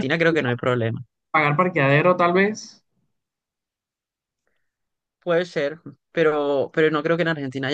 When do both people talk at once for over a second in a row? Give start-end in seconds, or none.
none